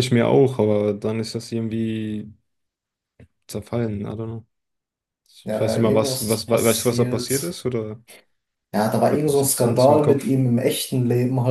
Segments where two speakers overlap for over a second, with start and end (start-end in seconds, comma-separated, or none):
5.5-7.6, 9.1-10.3